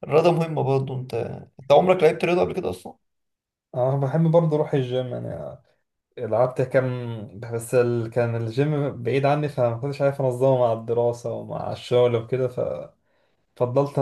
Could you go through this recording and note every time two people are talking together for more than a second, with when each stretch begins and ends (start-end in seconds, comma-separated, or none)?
none